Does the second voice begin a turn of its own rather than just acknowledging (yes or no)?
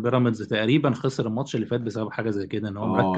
yes